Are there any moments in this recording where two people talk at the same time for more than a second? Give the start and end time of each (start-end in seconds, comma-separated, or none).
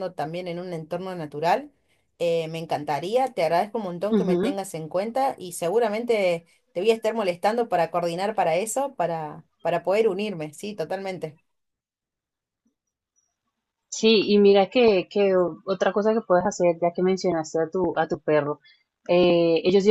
none